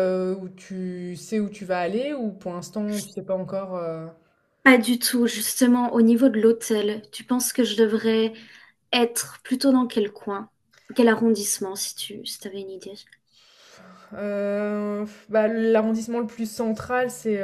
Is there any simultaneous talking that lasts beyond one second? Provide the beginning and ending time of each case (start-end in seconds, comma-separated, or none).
none